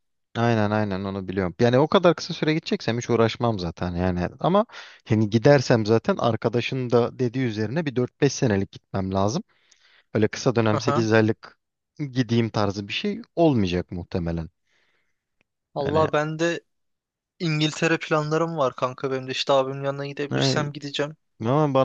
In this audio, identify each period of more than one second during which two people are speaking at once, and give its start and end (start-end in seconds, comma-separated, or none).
none